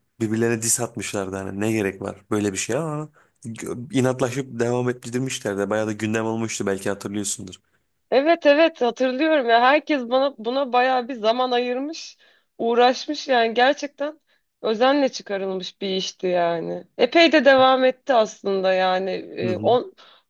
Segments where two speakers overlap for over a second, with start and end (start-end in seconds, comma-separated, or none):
none